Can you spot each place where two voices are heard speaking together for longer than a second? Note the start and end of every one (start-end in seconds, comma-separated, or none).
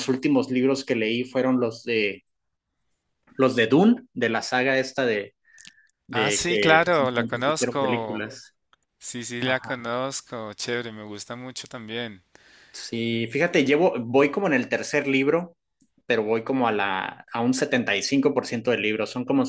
6.1-8.2